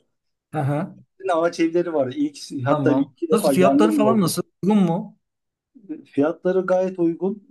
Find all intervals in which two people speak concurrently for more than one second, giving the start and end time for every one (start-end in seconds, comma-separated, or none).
2.7-4.3